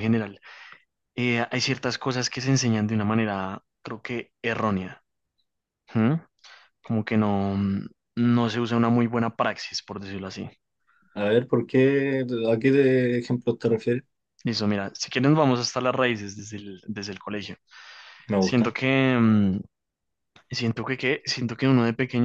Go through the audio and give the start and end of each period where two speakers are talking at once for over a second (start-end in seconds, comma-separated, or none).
none